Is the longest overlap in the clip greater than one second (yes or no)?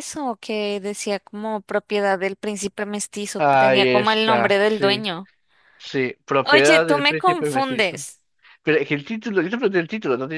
yes